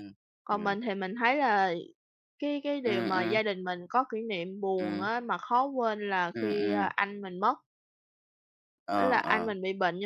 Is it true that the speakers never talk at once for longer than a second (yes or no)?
yes